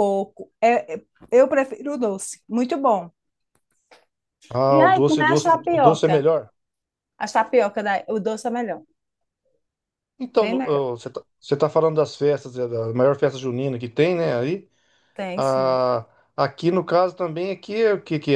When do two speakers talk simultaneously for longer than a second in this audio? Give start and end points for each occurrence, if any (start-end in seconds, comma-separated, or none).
4.7-6.2